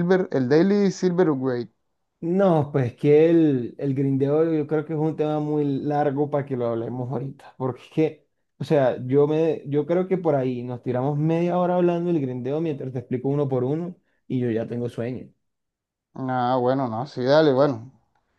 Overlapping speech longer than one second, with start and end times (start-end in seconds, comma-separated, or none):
none